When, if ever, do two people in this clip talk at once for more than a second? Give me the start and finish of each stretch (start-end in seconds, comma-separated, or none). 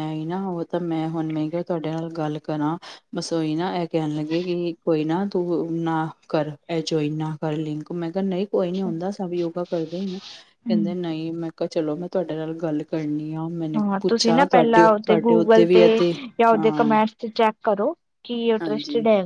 13.8-15.8